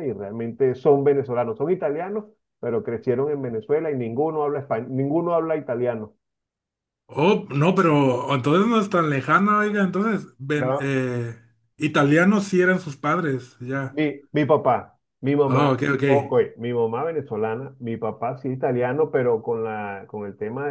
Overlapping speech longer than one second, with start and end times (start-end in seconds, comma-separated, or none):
none